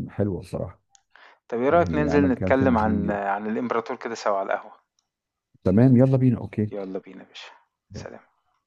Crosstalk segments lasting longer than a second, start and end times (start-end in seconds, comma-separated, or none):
1.7-3.2